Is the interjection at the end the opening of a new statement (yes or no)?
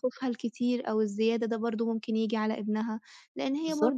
no